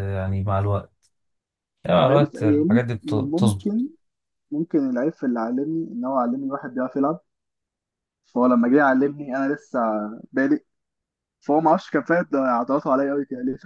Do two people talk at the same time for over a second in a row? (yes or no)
yes